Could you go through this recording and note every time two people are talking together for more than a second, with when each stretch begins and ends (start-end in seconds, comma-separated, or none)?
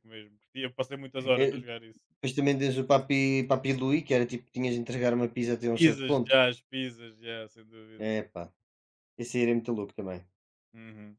none